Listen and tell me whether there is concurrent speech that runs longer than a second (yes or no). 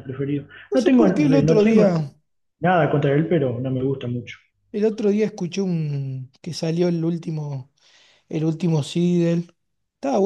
yes